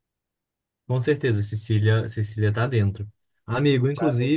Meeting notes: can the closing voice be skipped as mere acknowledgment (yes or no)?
yes